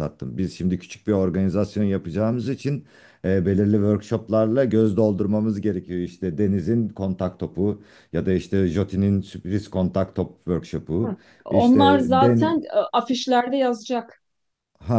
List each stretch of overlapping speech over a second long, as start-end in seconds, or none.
11.0-12.5